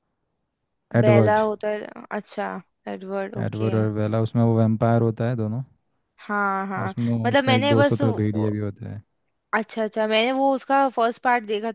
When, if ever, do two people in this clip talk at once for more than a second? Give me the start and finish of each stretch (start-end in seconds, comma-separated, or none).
6.8-8.5